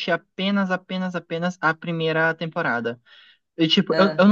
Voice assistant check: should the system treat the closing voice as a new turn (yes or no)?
no